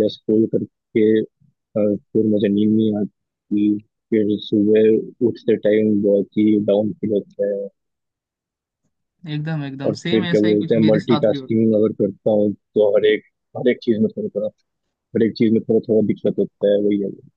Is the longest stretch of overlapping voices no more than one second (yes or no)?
no